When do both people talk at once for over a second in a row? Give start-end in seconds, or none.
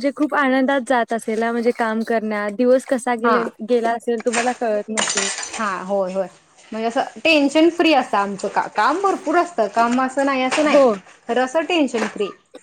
none